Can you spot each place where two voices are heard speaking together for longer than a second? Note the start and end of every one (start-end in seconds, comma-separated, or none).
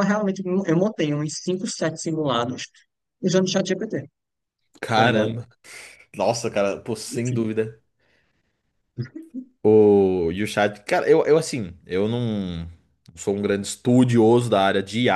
none